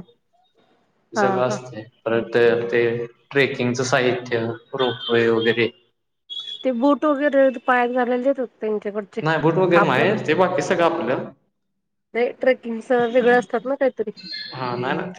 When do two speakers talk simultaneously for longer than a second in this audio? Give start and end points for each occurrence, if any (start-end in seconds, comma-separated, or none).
none